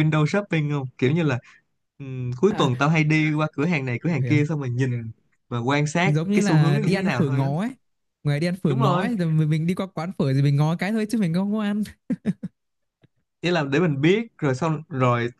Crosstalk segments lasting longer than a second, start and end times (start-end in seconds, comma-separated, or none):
6.0-7.5